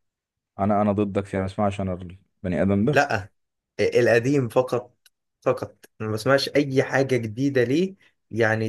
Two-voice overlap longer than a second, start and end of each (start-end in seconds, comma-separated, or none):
none